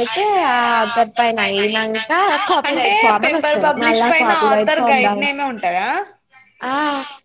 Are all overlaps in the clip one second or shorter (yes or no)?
no